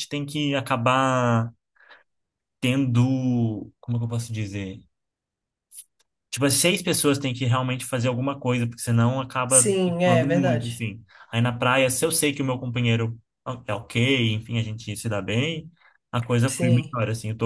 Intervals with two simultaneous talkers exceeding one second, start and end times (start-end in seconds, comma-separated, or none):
9.4-10.8